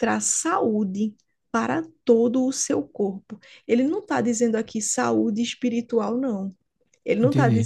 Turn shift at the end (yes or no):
no